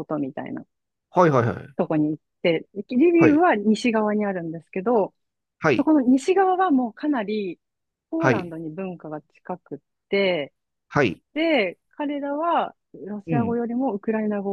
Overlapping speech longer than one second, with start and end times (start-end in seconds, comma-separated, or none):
none